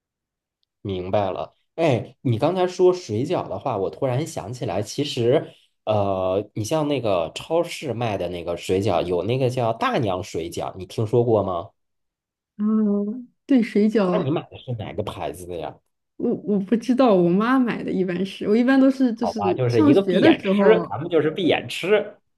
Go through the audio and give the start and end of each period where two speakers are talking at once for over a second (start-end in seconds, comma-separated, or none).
19.1-20.9